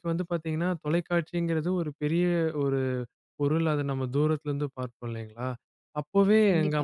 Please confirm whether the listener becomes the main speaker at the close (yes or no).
no